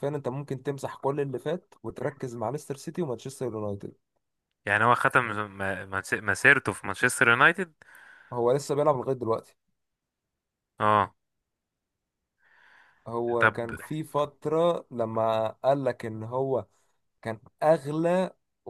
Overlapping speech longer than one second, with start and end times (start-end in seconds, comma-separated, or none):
none